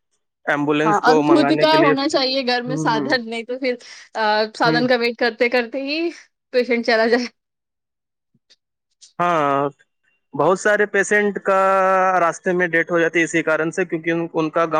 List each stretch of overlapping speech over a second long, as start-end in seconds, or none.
0.9-3.1